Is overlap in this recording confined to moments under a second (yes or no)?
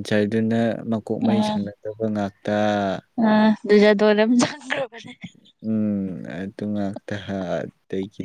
yes